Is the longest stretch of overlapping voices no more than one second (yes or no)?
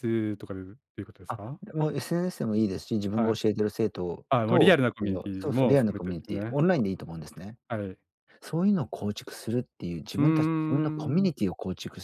no